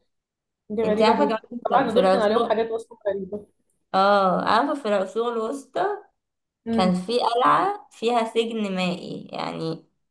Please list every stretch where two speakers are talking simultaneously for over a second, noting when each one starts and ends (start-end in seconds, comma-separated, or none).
0.8-2.5